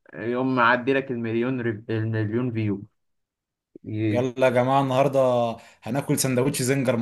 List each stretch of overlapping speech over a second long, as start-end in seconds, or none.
none